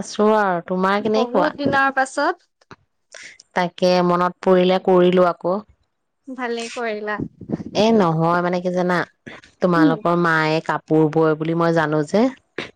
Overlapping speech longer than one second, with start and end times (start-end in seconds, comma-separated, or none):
none